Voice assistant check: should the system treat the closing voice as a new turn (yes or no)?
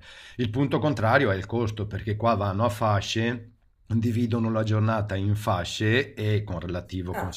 no